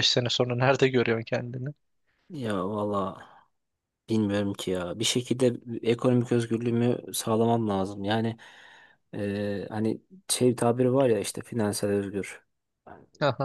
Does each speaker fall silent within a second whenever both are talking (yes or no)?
yes